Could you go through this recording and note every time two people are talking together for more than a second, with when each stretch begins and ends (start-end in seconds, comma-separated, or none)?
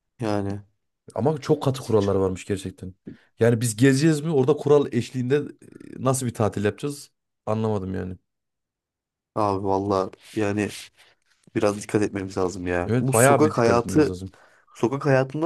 12.8-14.2